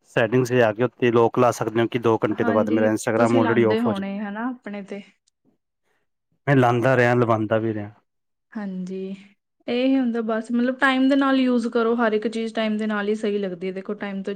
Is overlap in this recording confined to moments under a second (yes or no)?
no